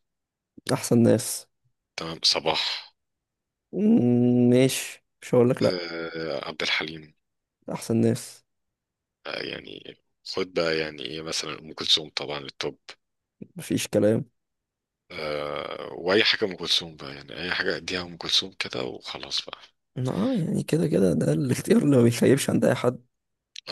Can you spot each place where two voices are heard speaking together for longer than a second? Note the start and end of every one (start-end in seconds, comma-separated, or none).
none